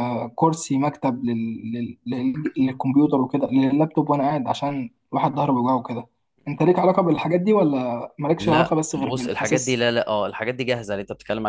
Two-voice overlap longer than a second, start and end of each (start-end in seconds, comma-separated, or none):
8.4-9.8